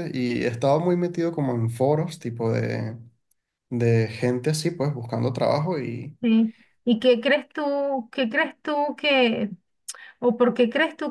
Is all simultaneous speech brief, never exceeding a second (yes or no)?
yes